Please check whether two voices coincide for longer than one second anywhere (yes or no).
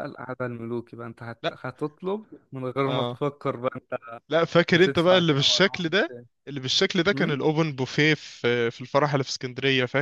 yes